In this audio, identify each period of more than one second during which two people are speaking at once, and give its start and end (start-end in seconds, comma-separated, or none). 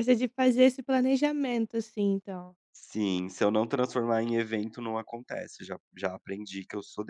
none